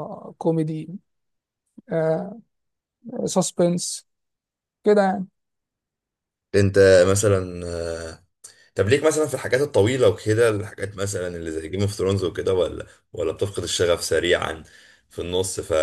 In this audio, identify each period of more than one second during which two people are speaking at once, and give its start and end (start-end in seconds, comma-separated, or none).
none